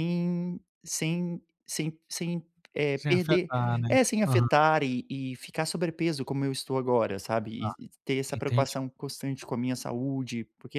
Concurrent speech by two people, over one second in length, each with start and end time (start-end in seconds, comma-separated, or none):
none